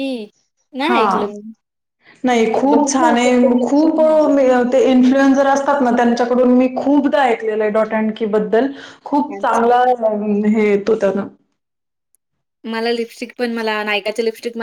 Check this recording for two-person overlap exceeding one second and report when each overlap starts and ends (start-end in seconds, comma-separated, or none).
2.3-4.0